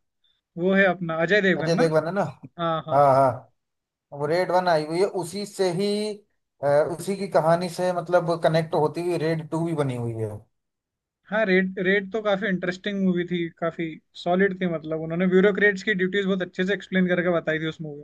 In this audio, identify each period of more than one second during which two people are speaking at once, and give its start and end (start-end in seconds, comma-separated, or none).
none